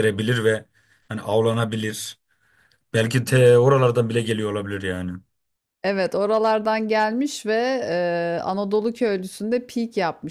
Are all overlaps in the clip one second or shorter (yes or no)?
yes